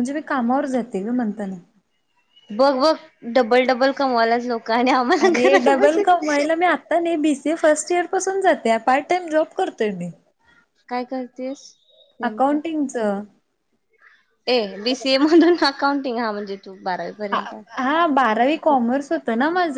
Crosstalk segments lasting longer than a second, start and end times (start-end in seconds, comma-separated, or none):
none